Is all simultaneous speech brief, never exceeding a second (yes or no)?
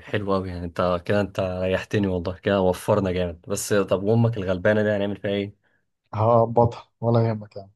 yes